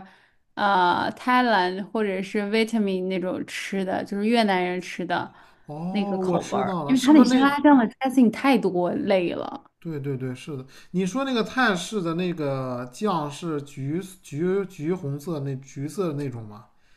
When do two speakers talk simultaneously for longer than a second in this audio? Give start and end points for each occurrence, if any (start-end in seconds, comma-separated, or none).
5.9-7.5